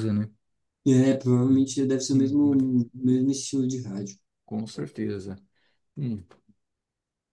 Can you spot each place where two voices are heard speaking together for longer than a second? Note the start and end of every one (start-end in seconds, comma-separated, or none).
none